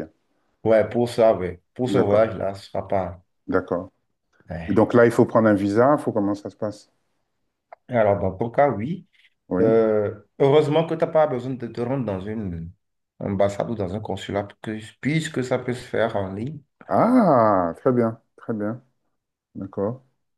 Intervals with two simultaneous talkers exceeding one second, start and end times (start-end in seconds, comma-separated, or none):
none